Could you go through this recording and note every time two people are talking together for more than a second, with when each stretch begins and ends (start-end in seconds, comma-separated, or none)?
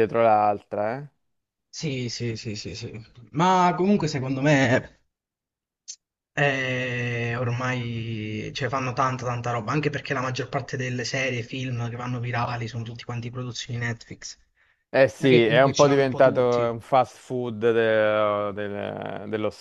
15.2-16.8